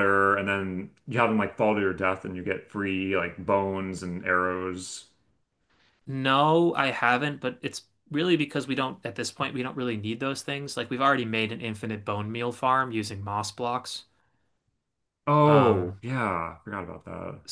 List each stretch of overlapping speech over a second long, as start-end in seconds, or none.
none